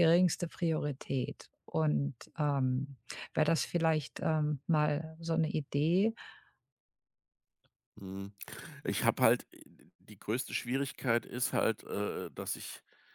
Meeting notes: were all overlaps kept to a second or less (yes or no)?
yes